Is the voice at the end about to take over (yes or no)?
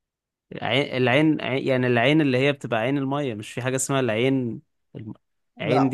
no